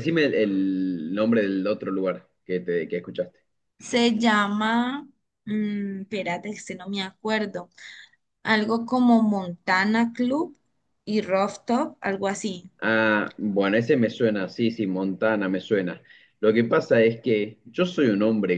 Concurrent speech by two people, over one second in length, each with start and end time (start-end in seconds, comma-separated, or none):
none